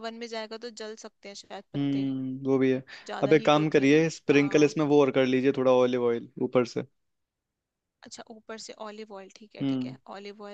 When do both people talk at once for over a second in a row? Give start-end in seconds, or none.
3.2-4.8